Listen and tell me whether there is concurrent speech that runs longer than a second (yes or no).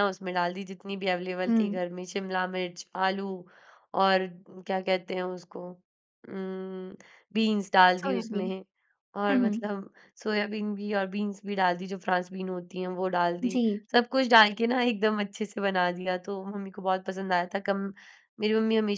no